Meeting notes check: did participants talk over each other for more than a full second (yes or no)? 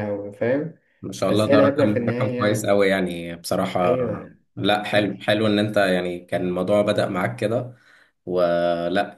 yes